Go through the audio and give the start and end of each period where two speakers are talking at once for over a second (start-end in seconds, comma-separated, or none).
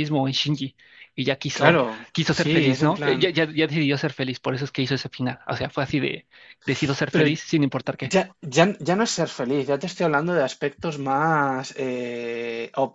1.5-3.3